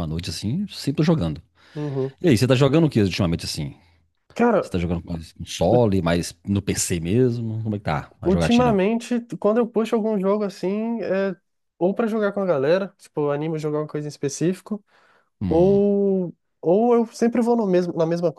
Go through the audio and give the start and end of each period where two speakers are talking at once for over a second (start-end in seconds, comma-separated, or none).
none